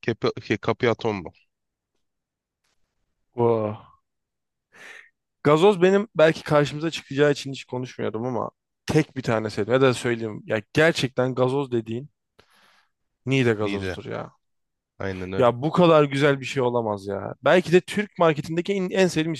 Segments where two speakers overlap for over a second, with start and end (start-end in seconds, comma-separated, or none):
none